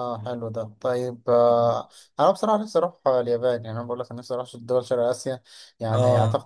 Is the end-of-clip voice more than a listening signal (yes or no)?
no